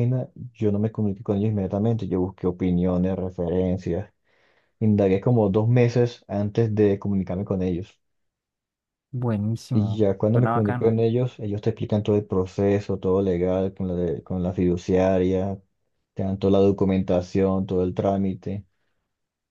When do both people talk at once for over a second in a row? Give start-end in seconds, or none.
9.7-11.0